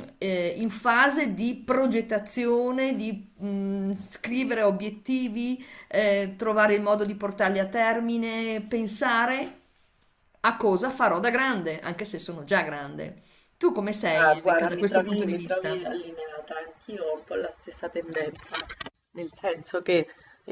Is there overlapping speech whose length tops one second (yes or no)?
yes